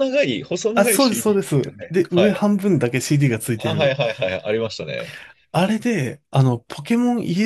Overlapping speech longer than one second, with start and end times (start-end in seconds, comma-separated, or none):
0.8-2.4